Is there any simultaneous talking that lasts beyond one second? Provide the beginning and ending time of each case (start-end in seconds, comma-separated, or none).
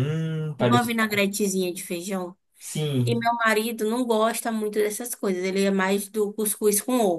none